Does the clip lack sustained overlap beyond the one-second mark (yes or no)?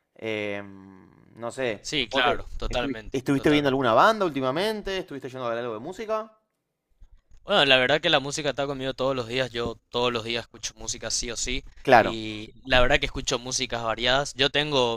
no